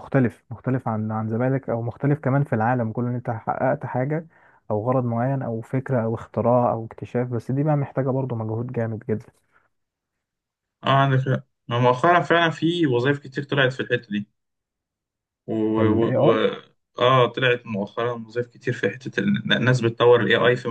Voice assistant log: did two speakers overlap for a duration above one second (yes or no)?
no